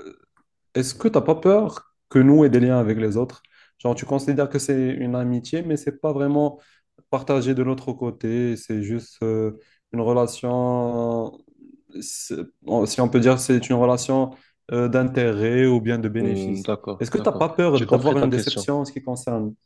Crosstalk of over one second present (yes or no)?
yes